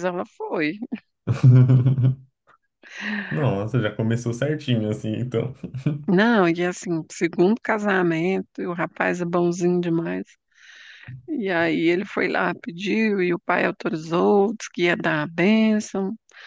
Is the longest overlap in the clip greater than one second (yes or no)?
no